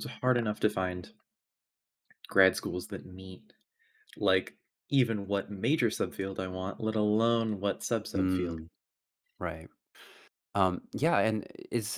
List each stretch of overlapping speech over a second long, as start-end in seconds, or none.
none